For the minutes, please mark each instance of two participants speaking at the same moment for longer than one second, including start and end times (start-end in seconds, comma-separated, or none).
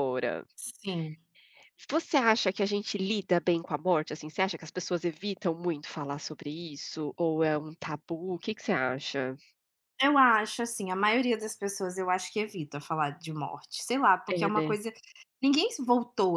none